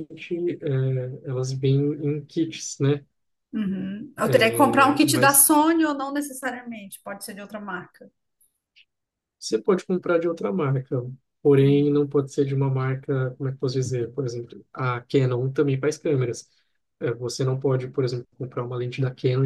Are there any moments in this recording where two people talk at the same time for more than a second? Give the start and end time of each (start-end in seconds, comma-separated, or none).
4.2-5.5